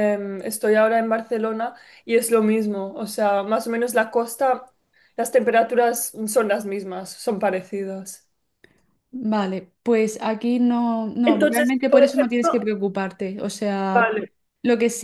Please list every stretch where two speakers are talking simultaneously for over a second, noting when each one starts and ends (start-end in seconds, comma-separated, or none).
11.3-12.6